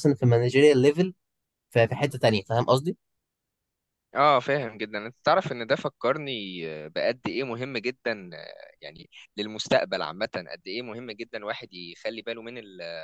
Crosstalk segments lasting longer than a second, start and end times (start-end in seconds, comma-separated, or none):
none